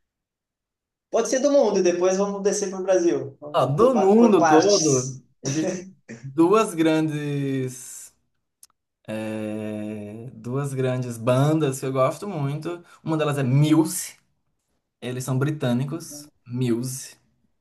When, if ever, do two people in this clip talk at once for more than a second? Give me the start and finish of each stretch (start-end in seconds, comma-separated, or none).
3.5-5.2